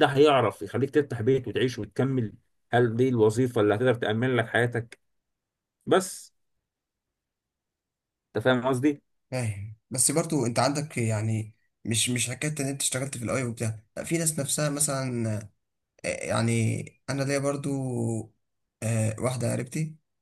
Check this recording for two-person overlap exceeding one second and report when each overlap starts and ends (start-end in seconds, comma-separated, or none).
none